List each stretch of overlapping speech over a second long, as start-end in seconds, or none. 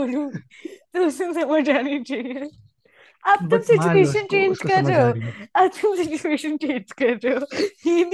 3.5-5.1